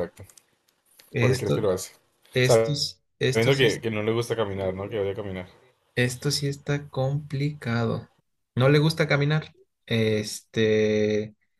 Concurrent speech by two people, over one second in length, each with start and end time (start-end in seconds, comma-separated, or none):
2.4-3.8